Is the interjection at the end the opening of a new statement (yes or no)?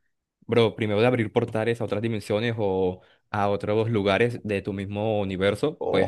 yes